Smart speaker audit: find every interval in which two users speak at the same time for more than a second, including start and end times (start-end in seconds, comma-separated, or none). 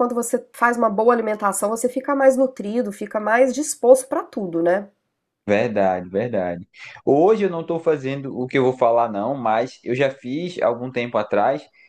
none